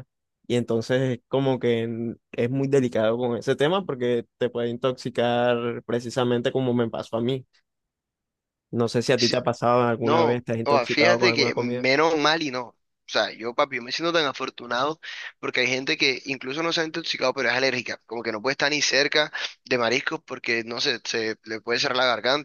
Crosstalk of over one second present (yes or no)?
yes